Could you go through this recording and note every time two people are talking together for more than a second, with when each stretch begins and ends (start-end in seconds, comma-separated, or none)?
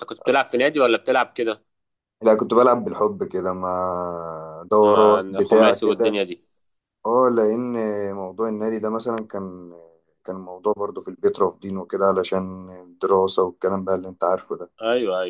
4.8-6.2